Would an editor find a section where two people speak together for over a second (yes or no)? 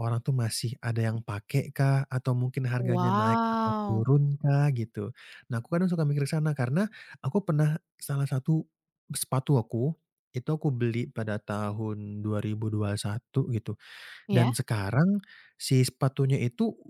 yes